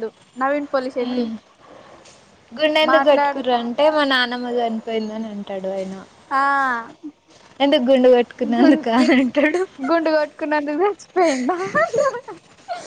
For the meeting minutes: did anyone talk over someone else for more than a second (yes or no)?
no